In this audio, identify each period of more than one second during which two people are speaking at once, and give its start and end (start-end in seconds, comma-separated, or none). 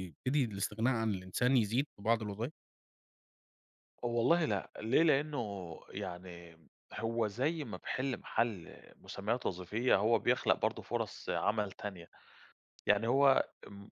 none